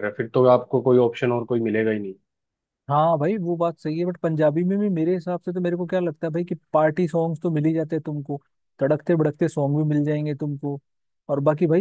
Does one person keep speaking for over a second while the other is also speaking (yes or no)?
no